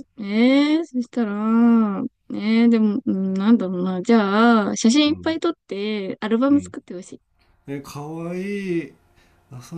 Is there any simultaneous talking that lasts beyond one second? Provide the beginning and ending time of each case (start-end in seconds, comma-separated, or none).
none